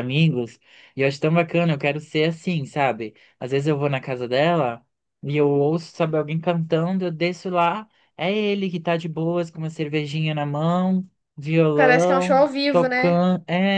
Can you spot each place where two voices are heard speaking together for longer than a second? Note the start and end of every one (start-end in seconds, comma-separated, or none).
11.7-13.2